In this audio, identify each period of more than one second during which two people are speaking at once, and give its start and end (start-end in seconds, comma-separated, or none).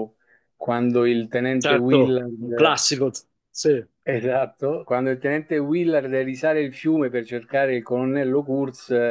1.6-2.9